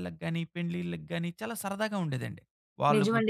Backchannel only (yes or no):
no